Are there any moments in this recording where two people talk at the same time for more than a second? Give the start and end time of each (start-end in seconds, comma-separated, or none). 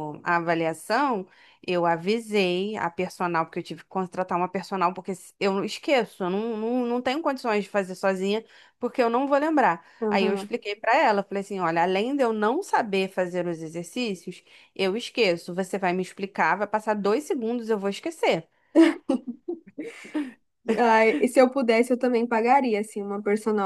none